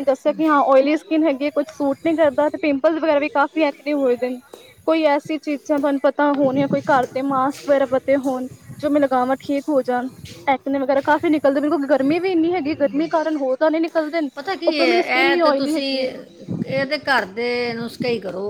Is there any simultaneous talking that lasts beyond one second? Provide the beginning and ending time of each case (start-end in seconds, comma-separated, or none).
none